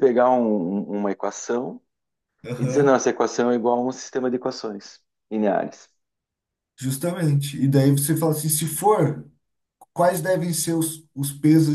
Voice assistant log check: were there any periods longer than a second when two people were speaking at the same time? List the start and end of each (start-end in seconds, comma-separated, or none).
none